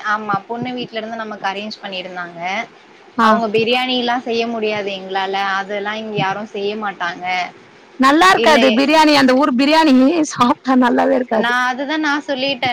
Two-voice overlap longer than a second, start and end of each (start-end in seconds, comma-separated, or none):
none